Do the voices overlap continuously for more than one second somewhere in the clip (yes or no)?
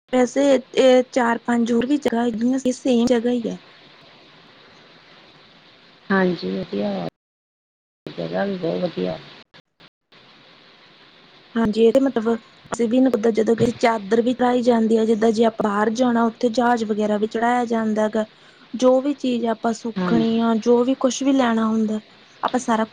no